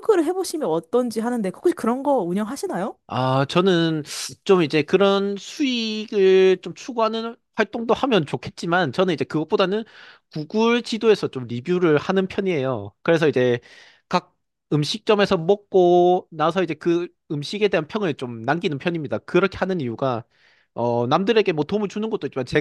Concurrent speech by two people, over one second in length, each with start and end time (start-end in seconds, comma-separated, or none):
none